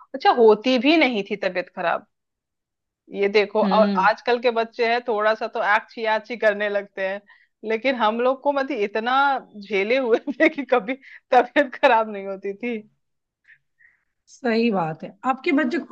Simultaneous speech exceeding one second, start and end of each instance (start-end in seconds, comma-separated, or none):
none